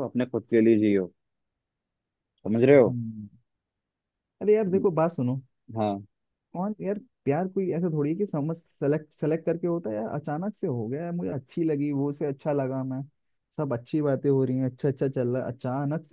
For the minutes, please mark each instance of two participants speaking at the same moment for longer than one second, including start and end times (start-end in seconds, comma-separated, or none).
none